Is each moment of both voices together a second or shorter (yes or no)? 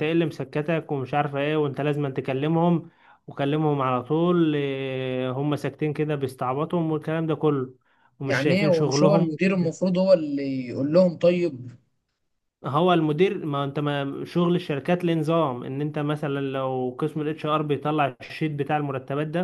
no